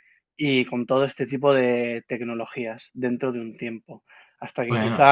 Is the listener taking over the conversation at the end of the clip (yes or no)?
no